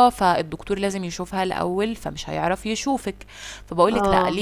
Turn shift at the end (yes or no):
no